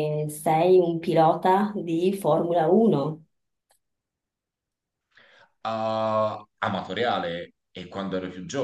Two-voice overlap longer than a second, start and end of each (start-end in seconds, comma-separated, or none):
none